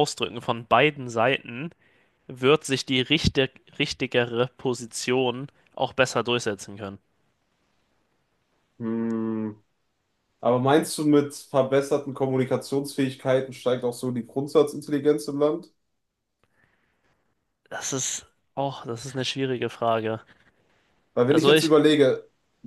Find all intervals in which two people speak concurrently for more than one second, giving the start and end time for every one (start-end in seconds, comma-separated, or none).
none